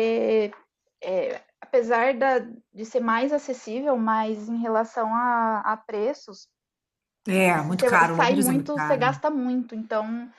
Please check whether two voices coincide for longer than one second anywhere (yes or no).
yes